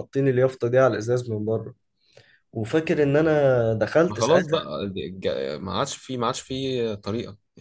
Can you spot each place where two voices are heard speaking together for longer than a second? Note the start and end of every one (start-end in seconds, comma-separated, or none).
none